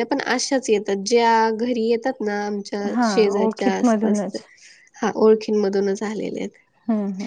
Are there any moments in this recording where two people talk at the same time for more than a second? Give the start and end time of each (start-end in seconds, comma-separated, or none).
3.0-4.4